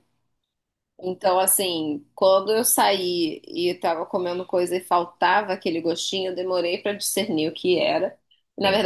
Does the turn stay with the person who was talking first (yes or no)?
yes